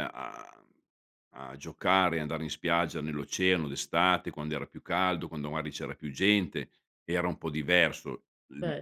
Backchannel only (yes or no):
yes